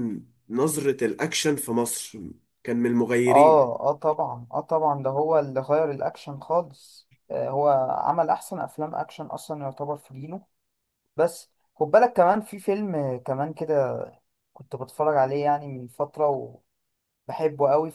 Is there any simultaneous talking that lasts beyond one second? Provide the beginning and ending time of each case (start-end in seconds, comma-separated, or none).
none